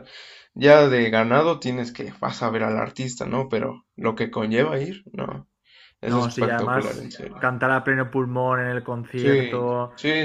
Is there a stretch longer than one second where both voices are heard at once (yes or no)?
yes